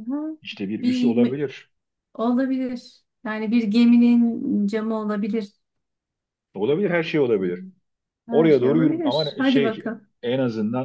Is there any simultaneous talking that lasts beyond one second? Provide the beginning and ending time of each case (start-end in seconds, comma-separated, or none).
8.3-10.1